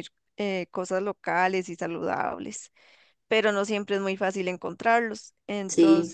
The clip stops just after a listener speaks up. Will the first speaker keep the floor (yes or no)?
yes